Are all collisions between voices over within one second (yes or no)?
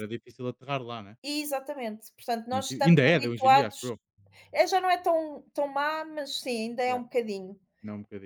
no